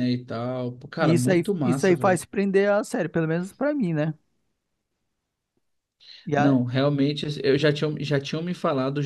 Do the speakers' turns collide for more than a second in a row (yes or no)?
yes